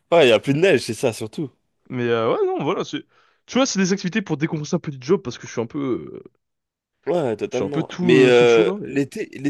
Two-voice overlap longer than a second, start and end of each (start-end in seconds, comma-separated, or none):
7.5-9.0